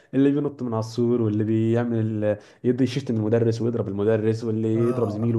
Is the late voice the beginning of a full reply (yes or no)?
no